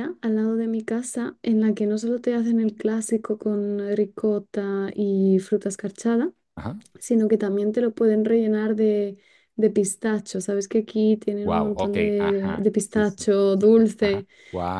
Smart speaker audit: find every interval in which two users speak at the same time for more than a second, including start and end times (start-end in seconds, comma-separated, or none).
11.4-14.3